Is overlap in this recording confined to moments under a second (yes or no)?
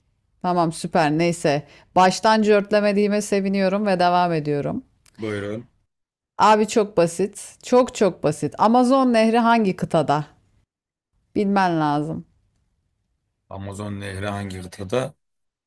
yes